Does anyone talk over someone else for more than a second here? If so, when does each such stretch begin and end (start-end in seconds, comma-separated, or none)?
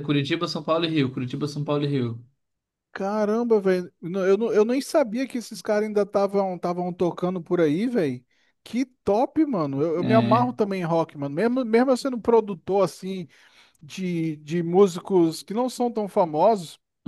none